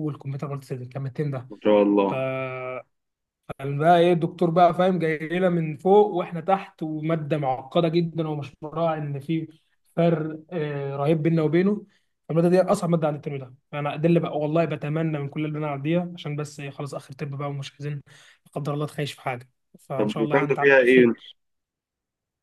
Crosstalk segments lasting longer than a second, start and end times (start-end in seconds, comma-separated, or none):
20.0-21.2